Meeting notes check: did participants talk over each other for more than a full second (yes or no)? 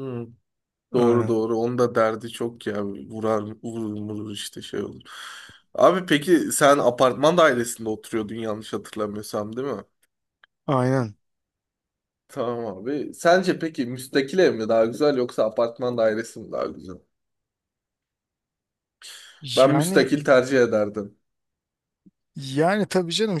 no